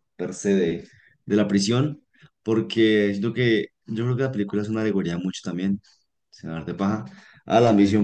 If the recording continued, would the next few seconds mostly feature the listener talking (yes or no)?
no